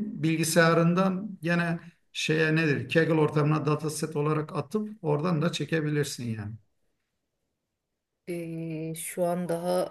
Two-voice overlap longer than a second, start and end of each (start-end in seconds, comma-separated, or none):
none